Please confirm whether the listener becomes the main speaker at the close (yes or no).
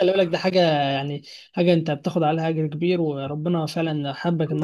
yes